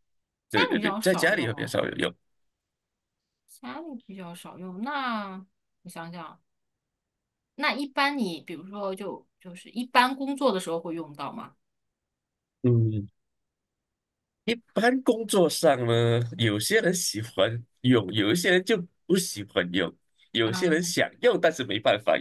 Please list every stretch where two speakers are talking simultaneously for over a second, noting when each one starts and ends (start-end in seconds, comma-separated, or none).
0.5-1.8